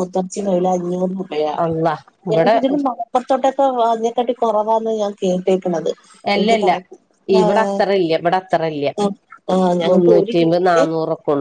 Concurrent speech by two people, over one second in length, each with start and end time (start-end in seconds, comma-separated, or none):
none